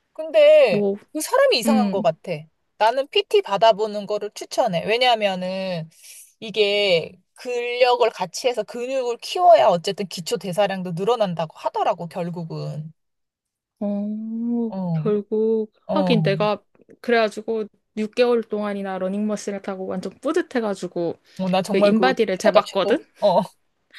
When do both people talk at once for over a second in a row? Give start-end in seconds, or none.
21.6-23.0